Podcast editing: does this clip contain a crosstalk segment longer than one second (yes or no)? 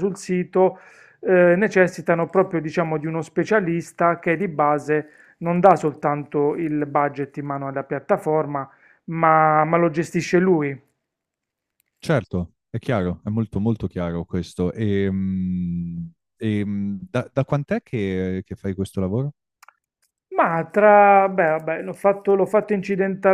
no